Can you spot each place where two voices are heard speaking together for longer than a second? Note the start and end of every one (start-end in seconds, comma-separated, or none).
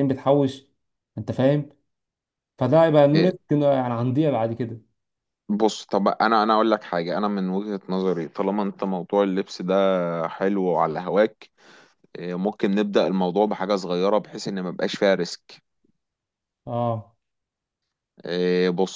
none